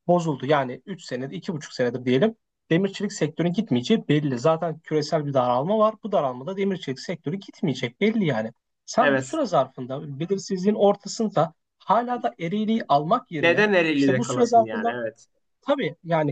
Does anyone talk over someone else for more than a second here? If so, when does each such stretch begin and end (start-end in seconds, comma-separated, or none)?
13.4-14.9